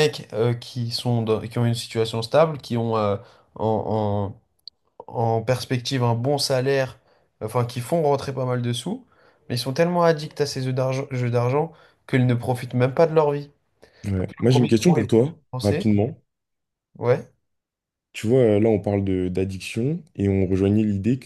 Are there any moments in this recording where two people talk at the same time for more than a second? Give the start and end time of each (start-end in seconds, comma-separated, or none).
14.1-15.9